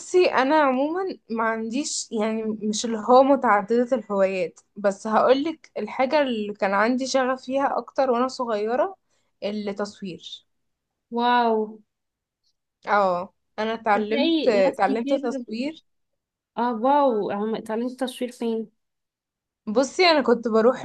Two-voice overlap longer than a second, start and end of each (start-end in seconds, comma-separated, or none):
13.9-15.2